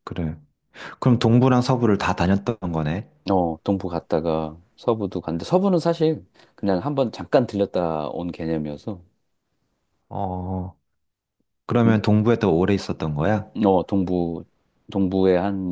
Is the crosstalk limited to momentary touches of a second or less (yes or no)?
yes